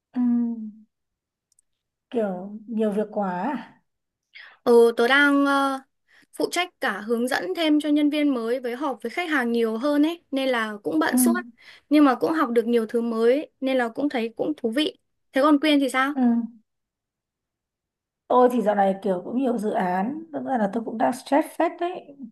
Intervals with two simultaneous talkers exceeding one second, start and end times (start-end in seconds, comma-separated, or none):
none